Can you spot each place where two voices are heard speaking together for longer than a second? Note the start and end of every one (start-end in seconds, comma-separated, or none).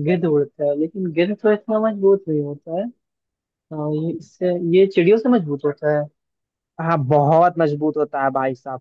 none